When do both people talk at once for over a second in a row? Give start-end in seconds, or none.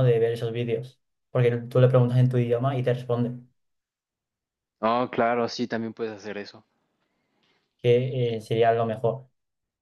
none